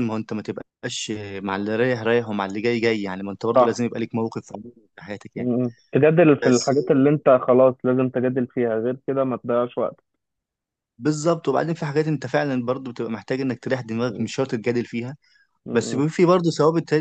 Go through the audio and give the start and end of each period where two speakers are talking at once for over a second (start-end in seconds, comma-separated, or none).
none